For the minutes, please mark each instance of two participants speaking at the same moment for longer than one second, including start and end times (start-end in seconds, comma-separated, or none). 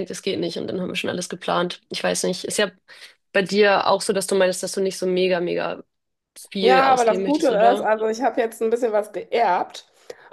6.6-7.9